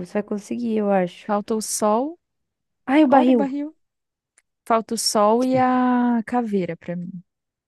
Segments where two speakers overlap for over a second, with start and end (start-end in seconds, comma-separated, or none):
none